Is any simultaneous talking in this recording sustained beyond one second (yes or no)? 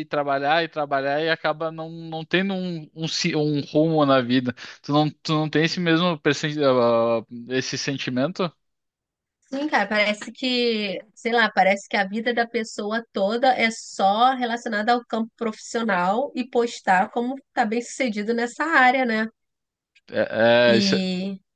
no